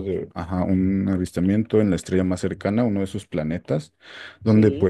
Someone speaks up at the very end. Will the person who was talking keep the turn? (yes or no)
yes